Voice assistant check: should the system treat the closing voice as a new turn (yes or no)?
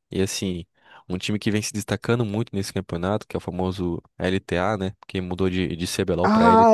yes